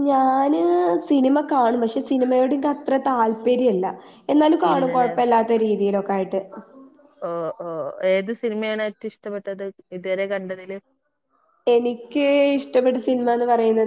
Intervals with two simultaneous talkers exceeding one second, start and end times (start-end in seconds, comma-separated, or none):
none